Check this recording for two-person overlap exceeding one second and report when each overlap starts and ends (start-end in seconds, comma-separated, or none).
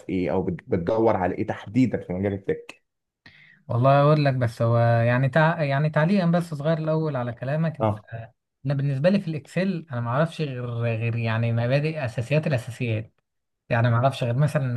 none